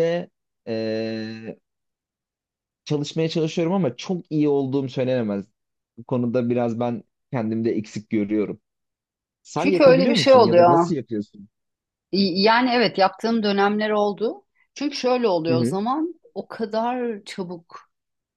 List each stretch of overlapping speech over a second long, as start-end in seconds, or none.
9.6-10.9